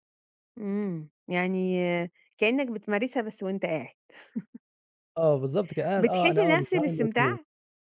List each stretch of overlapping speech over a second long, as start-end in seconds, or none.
6.0-7.4